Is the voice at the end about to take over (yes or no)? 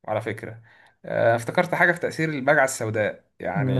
no